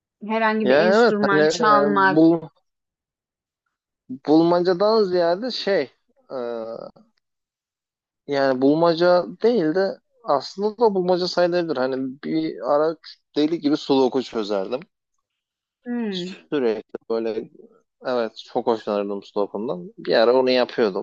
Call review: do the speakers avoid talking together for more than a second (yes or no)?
no